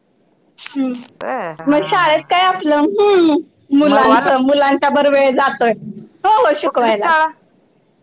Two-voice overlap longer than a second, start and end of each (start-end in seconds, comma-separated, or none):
none